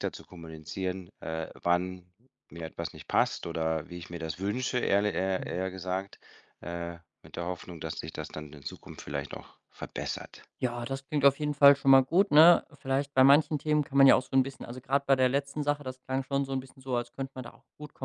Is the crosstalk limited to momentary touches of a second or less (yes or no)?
yes